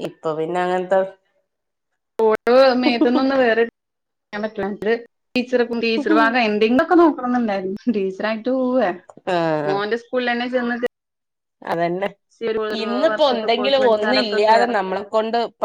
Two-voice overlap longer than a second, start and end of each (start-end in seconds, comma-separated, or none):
13.1-14.7